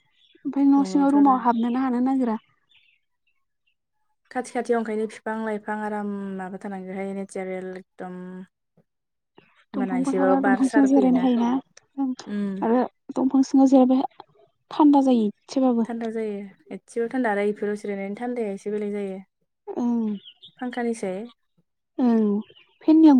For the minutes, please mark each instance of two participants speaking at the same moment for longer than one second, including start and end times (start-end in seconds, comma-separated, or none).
9.8-11.2